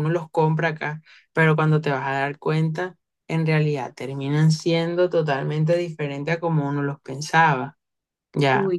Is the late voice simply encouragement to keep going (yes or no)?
yes